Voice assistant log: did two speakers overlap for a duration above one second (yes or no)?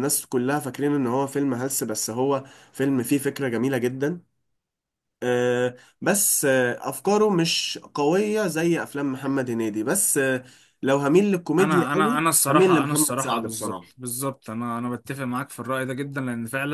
yes